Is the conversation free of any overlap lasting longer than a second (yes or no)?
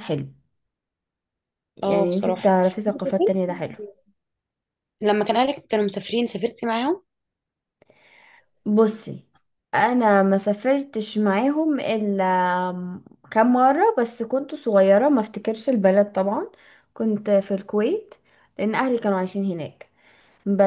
no